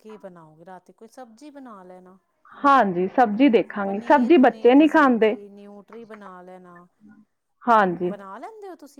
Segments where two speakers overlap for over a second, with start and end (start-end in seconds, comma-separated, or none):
3.9-5.3